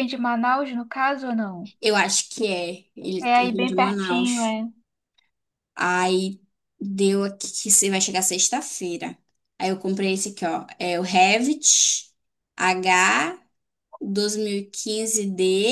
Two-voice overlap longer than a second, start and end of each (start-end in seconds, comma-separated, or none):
3.2-4.5